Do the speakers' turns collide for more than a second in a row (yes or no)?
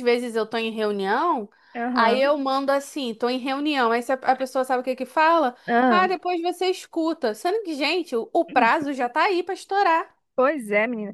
no